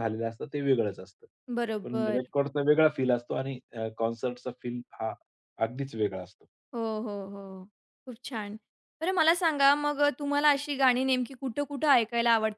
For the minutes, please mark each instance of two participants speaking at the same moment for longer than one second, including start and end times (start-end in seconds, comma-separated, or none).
none